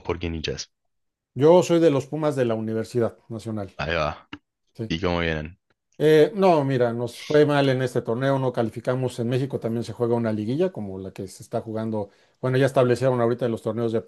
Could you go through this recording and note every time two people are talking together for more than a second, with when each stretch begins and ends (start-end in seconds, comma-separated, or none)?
none